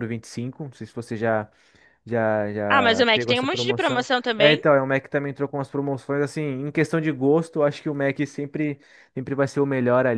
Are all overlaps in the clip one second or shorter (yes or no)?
no